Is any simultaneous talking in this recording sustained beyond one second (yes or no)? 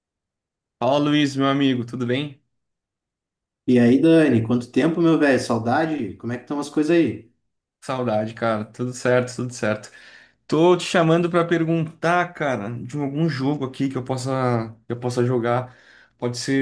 no